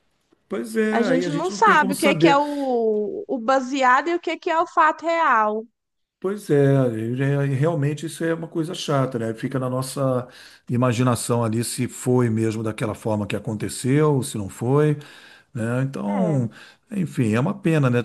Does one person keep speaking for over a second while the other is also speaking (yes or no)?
yes